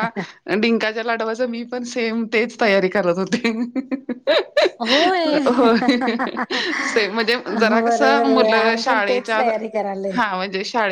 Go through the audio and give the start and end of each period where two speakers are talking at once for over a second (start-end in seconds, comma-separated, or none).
7.5-9.4